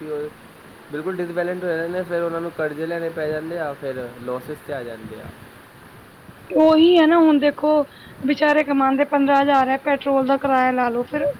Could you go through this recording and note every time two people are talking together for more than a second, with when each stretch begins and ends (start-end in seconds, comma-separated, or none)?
none